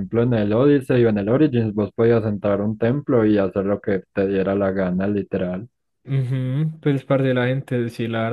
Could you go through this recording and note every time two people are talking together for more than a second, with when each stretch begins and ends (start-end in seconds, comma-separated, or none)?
none